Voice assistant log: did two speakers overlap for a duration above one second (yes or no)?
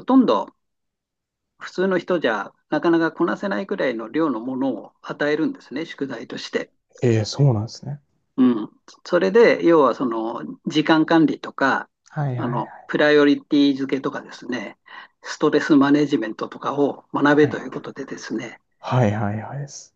no